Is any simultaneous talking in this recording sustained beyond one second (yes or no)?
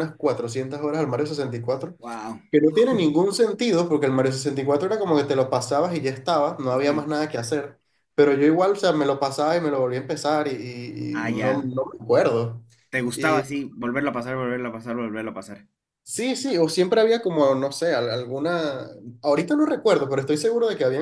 no